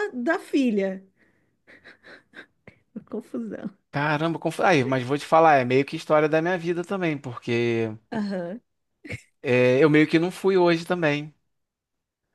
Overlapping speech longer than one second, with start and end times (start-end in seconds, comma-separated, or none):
none